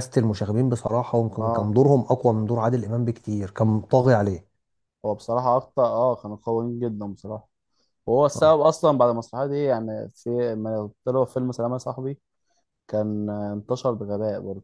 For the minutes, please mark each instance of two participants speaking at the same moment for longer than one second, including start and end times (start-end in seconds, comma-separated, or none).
none